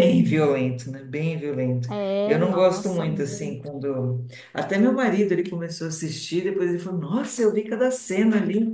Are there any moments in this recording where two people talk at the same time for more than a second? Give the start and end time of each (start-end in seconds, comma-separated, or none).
2.2-3.7